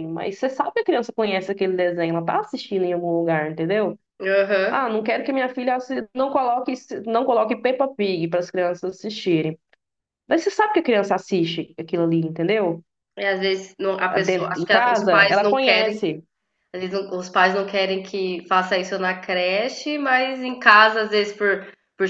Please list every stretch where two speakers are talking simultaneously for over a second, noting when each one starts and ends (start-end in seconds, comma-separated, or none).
14.2-15.9